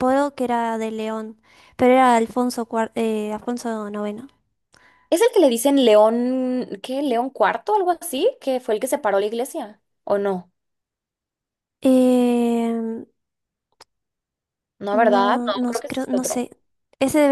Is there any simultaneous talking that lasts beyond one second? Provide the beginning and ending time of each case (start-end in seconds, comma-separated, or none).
14.9-16.4